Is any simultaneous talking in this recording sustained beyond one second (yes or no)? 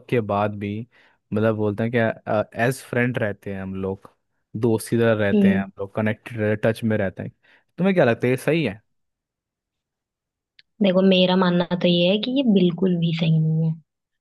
no